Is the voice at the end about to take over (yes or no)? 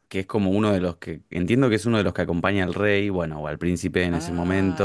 yes